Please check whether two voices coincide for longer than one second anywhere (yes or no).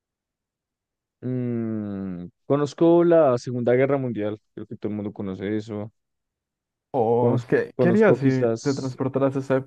yes